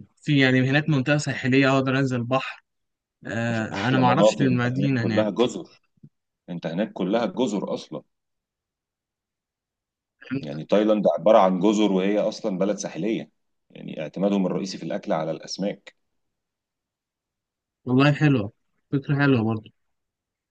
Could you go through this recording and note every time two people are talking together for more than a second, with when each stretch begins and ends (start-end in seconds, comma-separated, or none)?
3.5-5.3